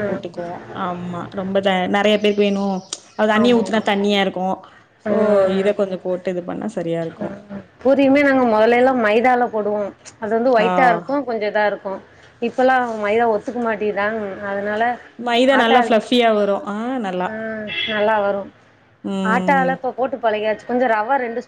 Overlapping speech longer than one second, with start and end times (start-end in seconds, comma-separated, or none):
none